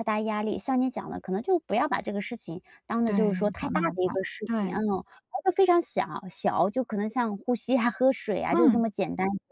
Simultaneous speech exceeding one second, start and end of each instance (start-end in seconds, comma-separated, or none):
3.0-4.8